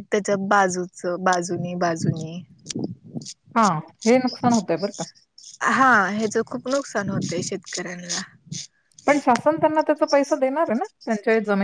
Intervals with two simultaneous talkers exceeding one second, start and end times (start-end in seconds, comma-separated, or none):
none